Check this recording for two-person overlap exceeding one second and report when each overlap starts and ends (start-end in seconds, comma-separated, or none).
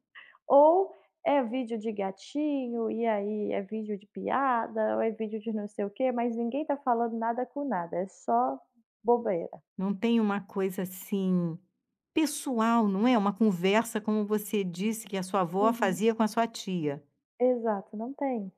none